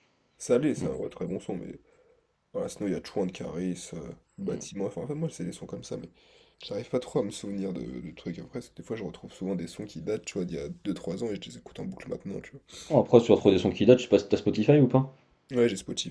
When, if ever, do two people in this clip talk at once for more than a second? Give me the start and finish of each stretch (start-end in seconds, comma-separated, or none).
none